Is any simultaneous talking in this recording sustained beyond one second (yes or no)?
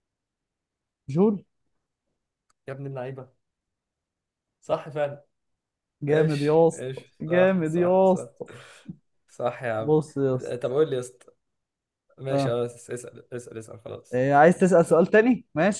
yes